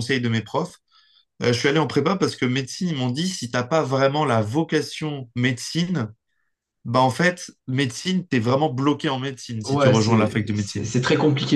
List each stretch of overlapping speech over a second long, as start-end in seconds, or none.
9.6-10.9